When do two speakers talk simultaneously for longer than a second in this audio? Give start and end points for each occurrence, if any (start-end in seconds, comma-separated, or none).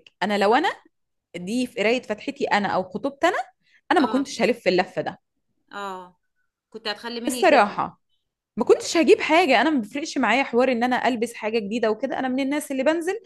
none